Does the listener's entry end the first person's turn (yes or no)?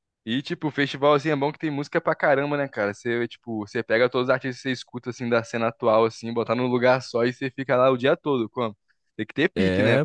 no